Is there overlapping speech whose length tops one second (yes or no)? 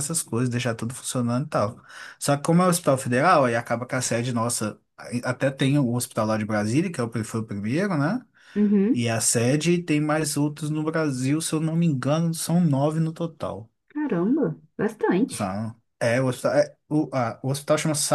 no